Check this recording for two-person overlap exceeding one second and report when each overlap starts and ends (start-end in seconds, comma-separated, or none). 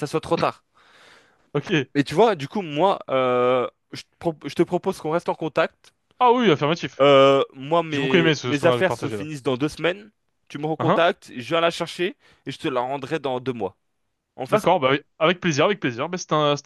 7.9-9.2